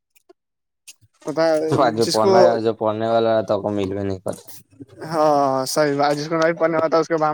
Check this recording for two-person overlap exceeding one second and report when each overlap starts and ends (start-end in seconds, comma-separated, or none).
none